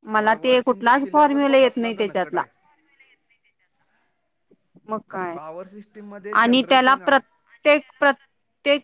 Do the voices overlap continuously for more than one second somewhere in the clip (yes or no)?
yes